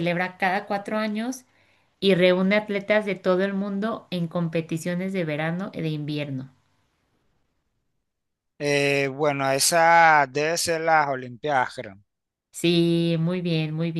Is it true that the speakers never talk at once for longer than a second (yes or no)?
yes